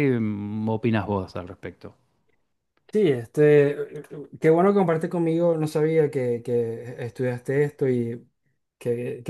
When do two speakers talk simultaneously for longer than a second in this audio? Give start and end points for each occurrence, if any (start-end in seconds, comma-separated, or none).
none